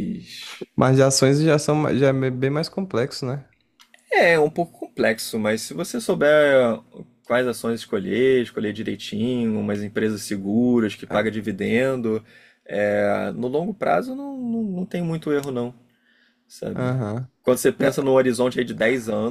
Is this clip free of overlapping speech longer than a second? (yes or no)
yes